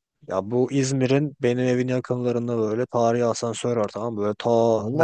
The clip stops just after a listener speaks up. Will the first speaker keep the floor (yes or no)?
yes